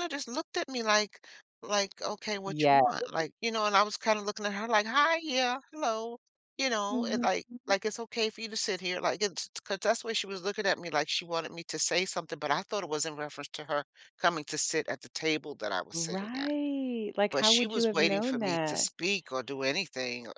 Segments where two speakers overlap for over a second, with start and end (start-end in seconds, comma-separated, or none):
17.3-18.9